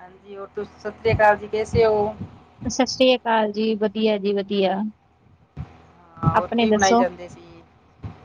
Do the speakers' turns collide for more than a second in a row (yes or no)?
no